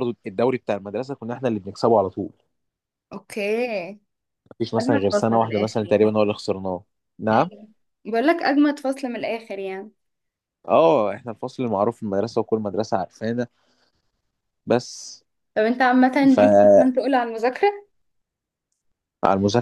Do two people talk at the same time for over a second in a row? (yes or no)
yes